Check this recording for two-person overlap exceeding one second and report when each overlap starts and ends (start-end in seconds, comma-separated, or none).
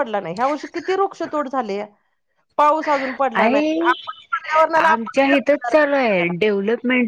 4.8-6.3